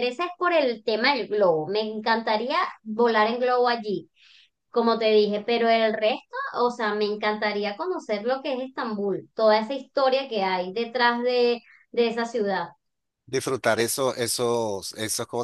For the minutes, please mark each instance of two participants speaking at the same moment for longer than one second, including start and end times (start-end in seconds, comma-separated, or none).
none